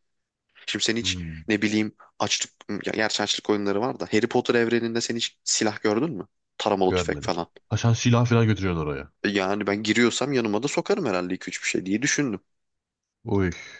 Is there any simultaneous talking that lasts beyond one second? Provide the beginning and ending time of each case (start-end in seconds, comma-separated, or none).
none